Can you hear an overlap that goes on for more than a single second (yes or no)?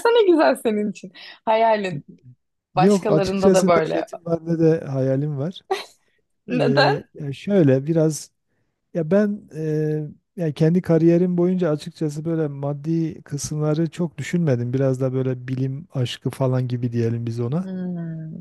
yes